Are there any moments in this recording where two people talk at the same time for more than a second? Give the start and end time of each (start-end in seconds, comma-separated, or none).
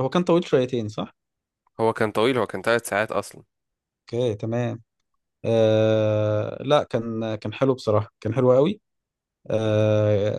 none